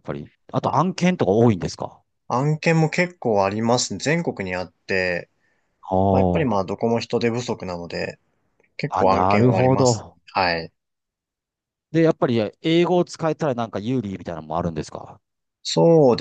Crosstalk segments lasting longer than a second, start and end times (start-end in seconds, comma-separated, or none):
8.9-10.2